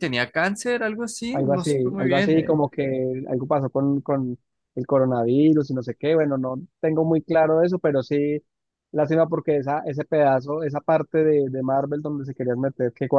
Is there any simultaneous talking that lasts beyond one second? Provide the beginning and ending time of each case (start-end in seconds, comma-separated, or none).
1.3-2.6